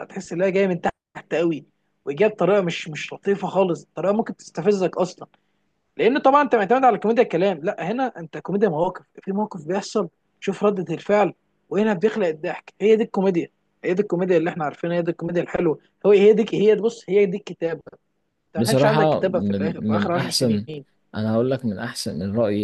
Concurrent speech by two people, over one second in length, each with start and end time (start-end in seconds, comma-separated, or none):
18.6-20.7